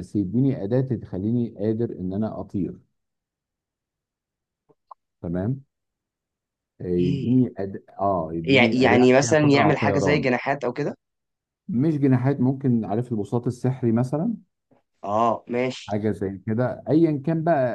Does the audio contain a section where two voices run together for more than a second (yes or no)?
yes